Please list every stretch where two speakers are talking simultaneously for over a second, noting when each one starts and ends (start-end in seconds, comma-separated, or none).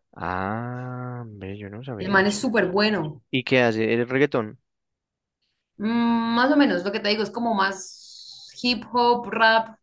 none